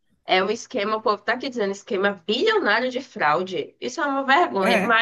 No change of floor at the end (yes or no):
yes